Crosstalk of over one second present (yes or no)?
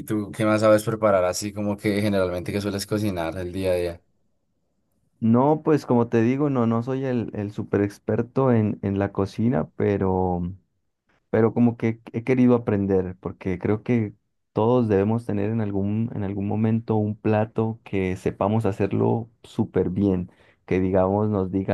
no